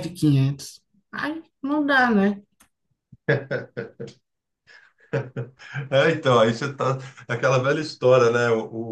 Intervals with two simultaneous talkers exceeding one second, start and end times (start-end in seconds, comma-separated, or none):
none